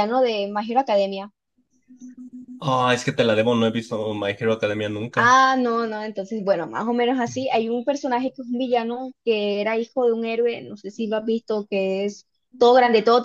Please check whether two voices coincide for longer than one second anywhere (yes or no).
no